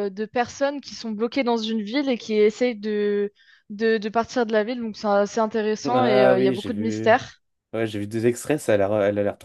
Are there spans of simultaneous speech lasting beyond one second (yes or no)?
yes